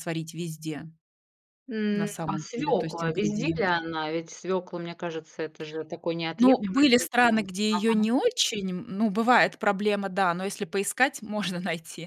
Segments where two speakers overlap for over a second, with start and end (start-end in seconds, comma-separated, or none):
1.9-3.8, 6.4-8.1